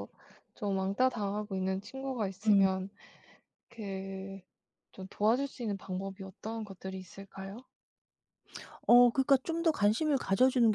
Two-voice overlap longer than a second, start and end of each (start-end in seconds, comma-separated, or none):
none